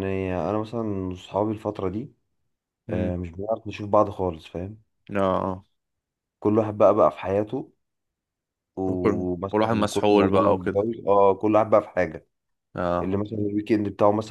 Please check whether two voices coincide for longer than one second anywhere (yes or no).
yes